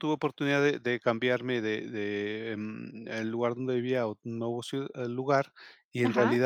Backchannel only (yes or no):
yes